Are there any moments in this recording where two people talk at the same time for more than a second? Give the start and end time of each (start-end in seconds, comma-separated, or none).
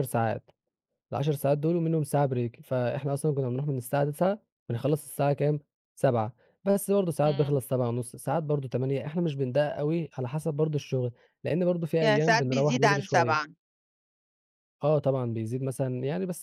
12.0-13.5